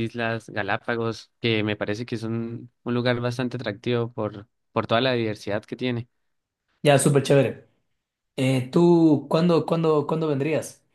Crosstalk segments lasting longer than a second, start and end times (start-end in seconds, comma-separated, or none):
none